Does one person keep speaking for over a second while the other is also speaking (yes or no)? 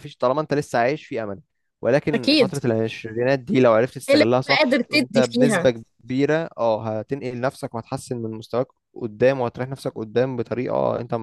yes